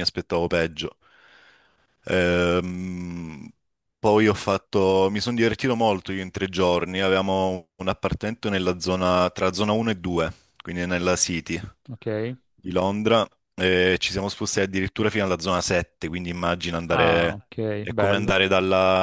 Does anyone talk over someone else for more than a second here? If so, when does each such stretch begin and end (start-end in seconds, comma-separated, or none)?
16.9-18.3